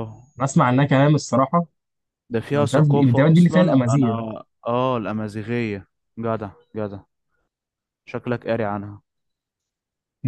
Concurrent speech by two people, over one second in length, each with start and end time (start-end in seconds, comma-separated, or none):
2.5-4.2